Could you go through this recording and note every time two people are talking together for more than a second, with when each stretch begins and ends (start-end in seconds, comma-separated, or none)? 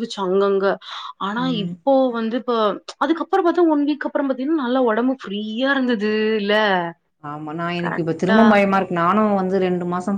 none